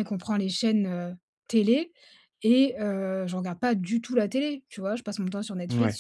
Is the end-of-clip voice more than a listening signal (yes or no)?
no